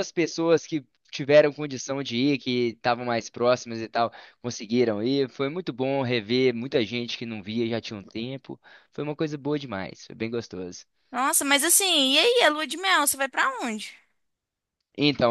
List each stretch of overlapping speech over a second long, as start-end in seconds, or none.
none